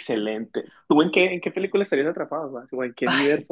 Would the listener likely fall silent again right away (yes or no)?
no